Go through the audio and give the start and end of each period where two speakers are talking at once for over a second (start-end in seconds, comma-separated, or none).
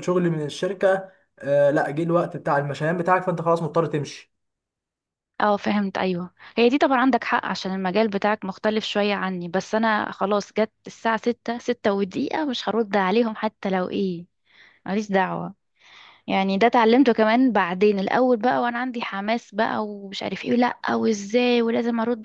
none